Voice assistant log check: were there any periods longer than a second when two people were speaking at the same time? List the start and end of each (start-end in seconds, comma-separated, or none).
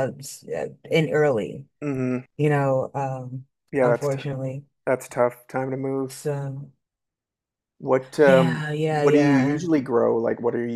8.2-9.6